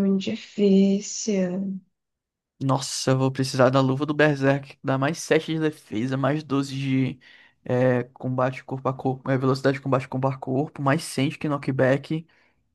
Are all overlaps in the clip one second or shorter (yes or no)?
yes